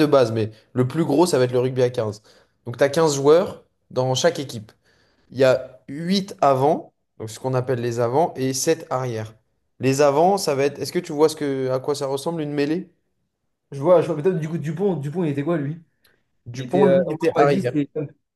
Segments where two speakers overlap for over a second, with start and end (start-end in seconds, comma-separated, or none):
16.5-17.8